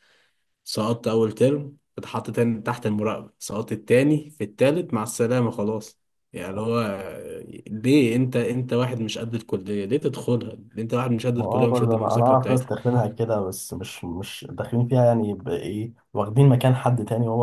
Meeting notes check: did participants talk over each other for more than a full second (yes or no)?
yes